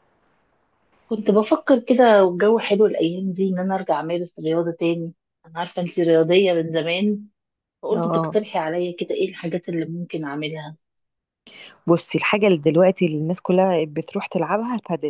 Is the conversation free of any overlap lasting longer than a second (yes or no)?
yes